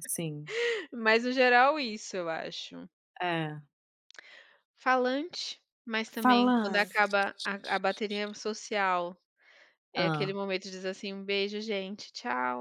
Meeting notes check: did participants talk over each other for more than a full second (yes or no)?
no